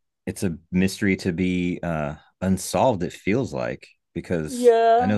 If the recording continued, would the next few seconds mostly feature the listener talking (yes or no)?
yes